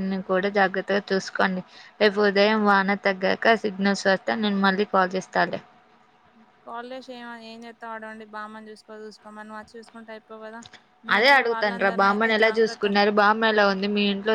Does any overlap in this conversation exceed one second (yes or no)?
yes